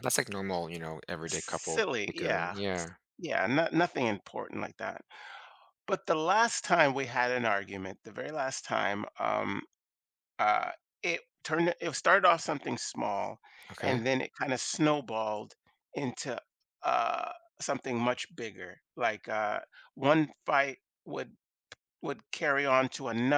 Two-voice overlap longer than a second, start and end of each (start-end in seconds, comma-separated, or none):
1.3-2.6